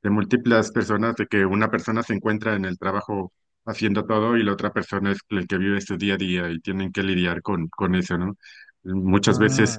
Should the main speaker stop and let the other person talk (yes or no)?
no